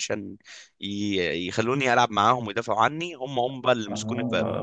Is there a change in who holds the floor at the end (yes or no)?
yes